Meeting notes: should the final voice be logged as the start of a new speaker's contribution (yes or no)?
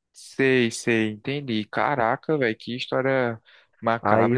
yes